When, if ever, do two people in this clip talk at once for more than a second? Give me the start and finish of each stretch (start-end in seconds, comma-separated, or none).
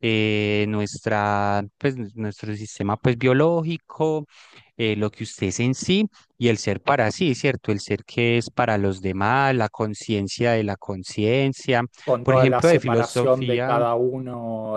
12.2-13.8